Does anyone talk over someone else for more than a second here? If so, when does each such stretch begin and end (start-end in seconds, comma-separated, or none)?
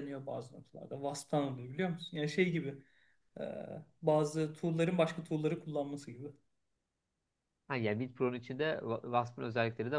none